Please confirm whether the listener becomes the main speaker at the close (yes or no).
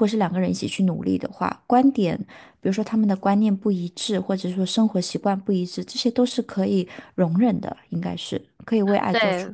yes